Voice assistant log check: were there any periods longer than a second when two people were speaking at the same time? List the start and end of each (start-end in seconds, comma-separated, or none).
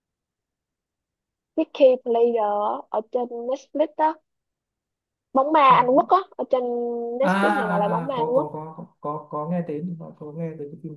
7.2-8.5